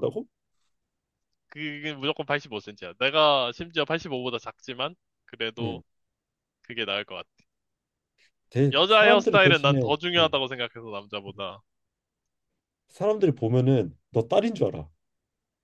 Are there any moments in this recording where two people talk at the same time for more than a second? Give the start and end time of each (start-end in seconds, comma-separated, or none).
8.7-10.3